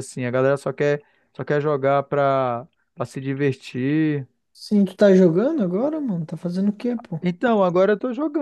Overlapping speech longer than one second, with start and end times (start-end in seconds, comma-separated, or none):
none